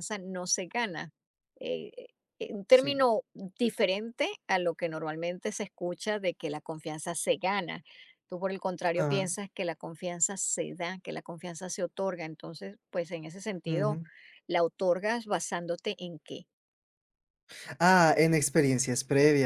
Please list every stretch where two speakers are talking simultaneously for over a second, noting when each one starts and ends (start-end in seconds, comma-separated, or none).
none